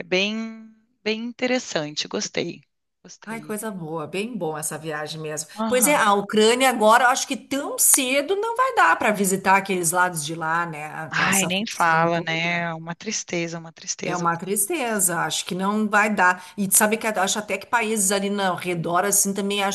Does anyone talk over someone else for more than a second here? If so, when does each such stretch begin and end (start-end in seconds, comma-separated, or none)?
11.1-12.7